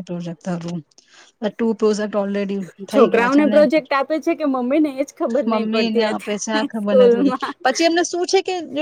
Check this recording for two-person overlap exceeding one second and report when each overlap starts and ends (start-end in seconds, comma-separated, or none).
5.5-7.6